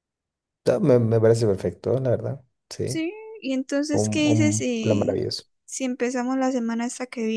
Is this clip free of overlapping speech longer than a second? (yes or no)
no